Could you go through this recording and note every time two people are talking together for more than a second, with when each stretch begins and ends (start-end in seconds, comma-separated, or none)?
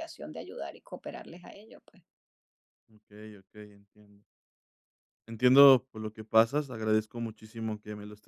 none